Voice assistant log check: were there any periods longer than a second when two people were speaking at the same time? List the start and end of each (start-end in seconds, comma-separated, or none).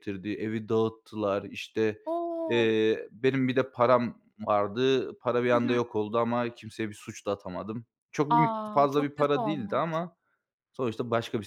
8.3-10.0